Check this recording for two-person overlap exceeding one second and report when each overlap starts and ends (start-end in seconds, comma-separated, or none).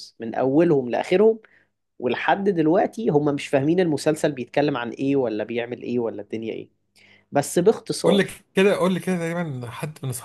none